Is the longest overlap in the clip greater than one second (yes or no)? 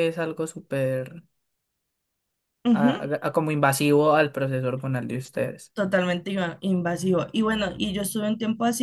no